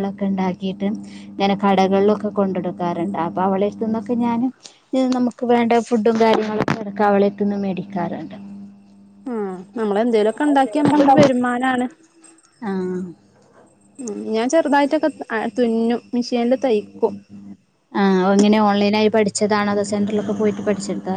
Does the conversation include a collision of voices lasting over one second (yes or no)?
no